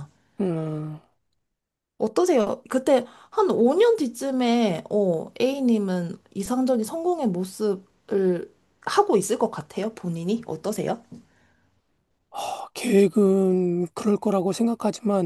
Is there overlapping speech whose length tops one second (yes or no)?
no